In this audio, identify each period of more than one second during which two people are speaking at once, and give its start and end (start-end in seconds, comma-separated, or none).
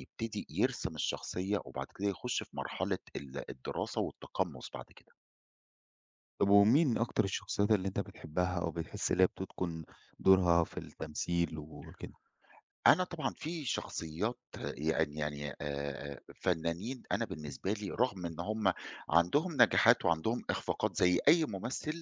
none